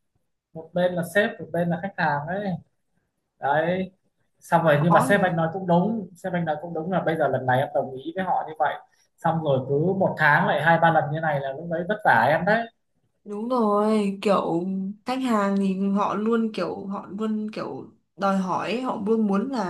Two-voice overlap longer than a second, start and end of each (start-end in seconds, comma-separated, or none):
none